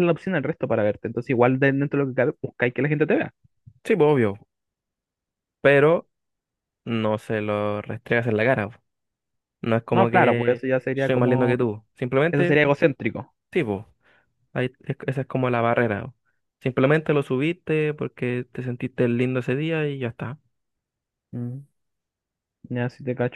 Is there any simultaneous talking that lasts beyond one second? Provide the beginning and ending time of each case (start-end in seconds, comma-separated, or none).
9.9-11.6